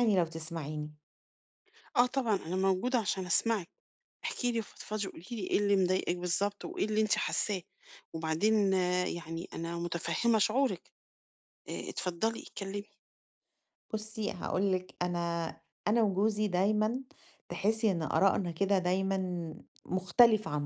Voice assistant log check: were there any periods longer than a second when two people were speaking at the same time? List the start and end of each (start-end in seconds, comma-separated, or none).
none